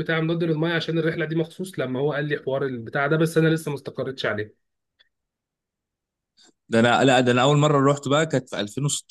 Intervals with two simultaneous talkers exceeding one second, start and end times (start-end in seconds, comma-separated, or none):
none